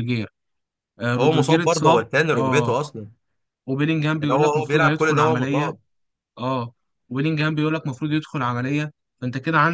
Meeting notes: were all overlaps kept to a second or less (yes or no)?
no